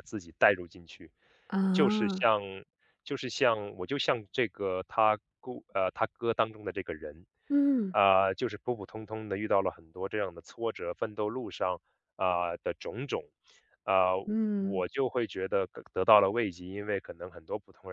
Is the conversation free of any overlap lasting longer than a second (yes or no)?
yes